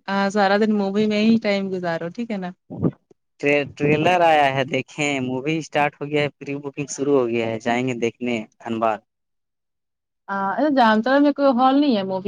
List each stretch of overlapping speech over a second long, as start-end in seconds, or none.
none